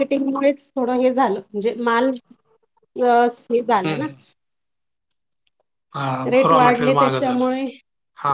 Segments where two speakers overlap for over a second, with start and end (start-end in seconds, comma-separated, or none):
6.3-7.6